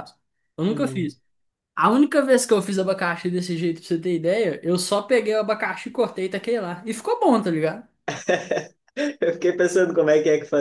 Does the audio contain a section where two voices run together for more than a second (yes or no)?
no